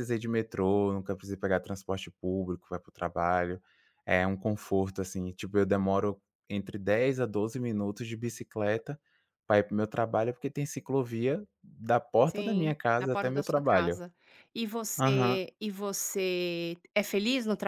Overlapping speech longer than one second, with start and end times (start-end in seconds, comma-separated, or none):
12.2-14.0